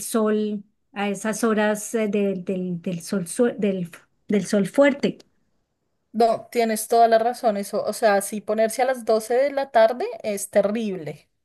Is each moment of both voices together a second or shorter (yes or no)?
yes